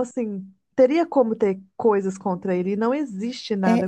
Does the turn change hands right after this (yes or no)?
yes